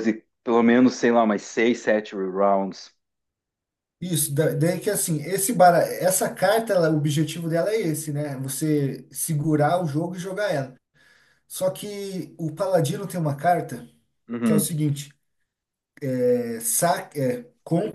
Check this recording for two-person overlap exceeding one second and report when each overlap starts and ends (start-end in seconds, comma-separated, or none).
none